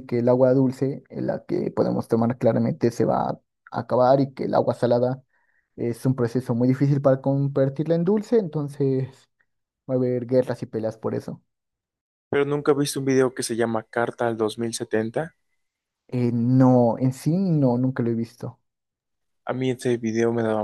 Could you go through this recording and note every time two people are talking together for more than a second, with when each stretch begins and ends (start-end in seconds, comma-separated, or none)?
none